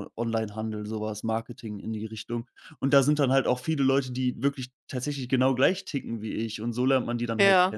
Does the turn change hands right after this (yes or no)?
yes